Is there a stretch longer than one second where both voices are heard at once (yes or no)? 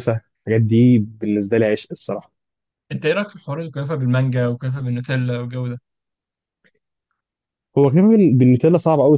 no